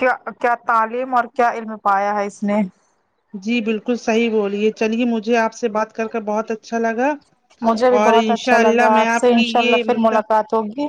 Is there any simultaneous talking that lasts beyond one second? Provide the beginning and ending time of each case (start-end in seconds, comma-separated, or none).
8.0-10.2